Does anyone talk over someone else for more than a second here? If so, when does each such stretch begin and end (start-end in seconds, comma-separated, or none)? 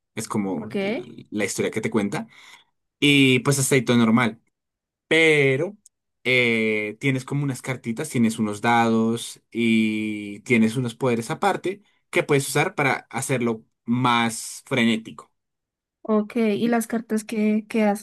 none